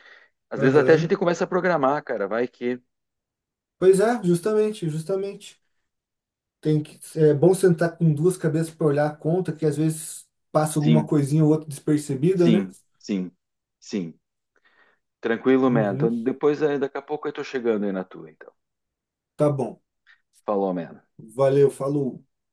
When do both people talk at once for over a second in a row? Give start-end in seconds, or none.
none